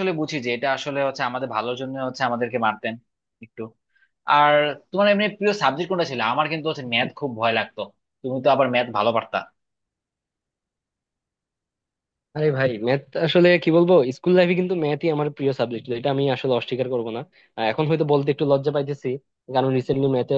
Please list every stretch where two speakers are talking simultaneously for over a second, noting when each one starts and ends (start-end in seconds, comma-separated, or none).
none